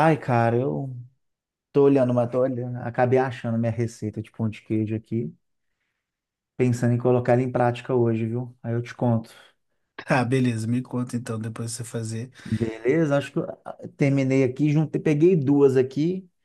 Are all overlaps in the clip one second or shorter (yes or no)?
yes